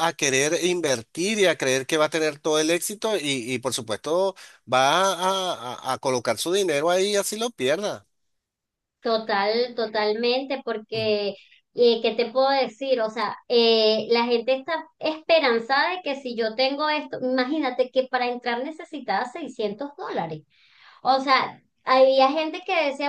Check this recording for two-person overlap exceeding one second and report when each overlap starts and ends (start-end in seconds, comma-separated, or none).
none